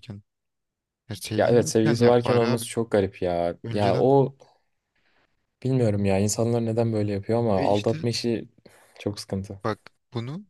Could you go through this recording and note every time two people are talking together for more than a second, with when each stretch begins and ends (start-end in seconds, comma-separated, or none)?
1.4-2.6